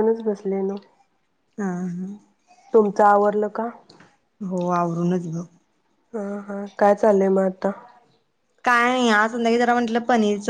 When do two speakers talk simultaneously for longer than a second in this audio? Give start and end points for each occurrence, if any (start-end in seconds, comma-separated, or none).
none